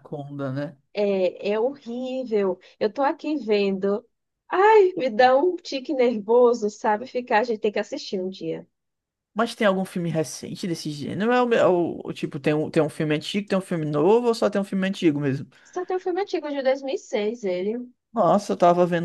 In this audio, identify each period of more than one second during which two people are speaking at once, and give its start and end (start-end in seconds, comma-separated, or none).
none